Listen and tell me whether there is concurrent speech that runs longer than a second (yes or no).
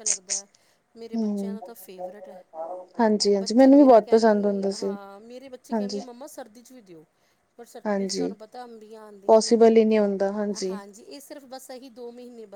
yes